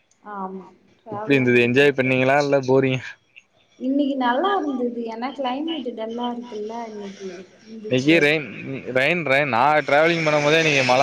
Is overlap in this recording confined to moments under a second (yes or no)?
no